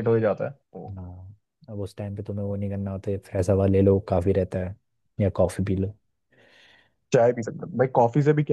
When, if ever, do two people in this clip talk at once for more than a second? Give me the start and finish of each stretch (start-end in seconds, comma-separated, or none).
none